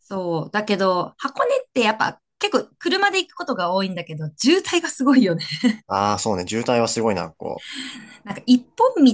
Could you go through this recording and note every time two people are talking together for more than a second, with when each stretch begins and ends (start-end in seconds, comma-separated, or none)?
none